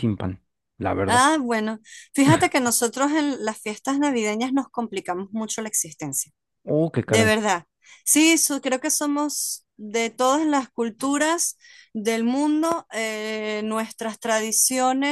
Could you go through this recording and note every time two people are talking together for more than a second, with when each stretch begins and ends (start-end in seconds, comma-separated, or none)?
none